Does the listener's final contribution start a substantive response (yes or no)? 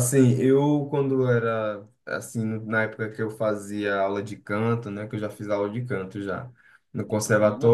no